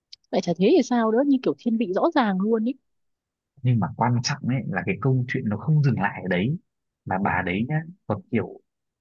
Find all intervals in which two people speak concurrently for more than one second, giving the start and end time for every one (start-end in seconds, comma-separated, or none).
none